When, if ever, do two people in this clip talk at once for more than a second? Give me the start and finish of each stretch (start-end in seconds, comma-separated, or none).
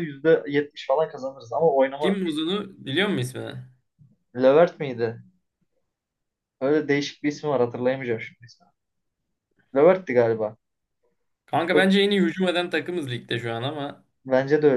none